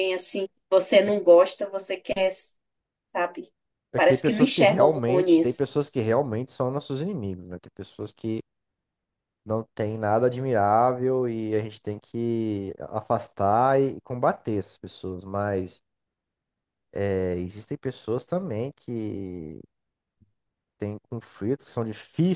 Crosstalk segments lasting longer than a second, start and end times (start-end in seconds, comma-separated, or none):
4.0-5.7